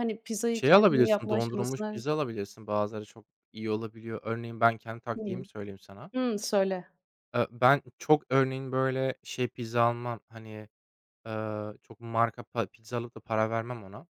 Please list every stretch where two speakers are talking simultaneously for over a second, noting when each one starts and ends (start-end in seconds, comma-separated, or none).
0.5-2.0